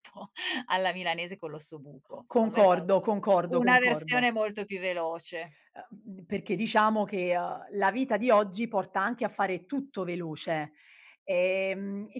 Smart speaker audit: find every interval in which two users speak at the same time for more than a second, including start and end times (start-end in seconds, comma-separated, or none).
2.3-4.3